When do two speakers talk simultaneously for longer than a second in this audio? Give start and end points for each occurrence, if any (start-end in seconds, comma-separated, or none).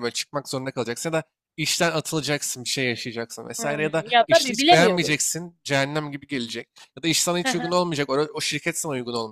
3.6-5.2